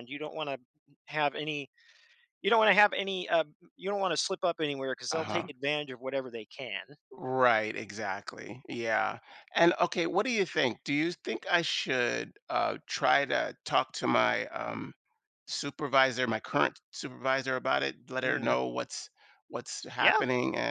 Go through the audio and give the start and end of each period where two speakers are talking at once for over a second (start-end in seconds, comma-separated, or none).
none